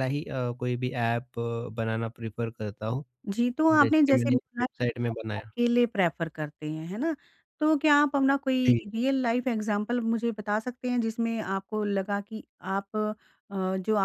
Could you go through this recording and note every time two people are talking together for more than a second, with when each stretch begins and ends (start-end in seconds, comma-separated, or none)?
3.7-5.5